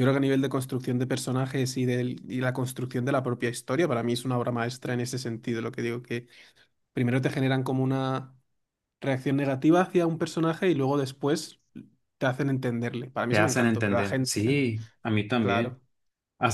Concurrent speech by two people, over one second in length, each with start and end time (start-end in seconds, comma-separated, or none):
13.3-14.6